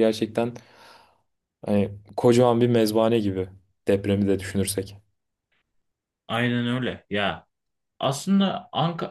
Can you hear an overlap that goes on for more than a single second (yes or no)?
no